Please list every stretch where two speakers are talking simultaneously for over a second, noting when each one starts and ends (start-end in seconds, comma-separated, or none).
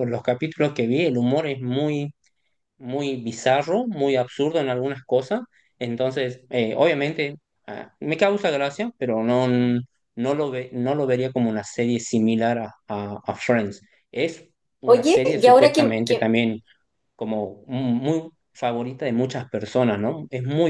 14.8-16.4